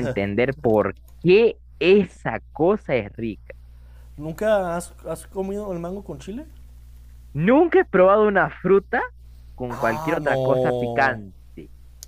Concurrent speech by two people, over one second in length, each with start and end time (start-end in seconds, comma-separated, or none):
9.7-11.2